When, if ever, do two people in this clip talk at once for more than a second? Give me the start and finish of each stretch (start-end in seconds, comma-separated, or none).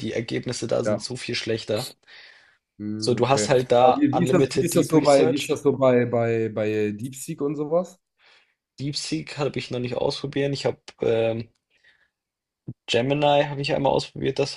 3.0-5.6